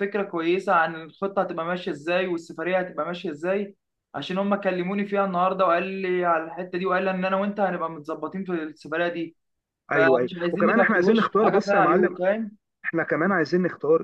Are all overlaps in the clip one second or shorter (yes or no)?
no